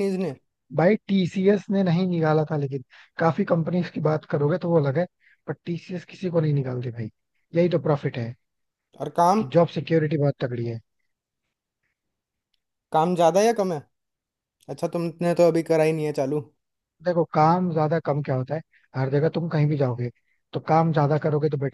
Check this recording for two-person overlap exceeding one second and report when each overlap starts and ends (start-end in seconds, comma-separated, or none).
none